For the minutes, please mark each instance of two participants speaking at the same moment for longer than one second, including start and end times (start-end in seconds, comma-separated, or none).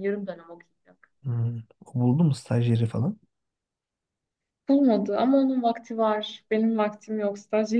none